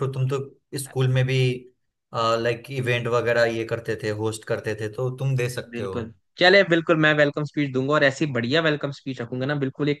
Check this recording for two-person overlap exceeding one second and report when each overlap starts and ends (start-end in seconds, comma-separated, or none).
none